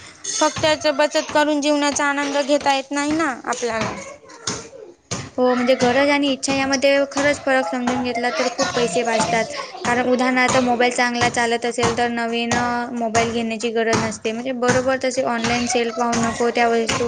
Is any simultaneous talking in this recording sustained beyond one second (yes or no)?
no